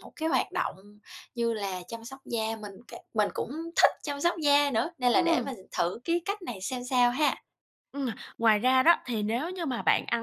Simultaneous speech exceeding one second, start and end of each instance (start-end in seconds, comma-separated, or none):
none